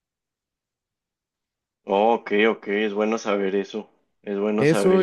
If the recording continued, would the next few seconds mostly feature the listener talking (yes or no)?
yes